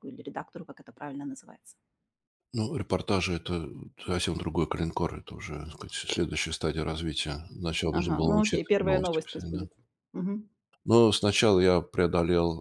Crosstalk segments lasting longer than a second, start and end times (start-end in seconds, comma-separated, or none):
8.0-9.7